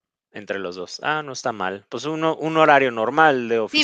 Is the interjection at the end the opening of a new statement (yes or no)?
yes